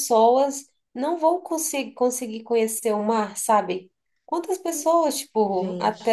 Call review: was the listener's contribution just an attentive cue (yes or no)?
yes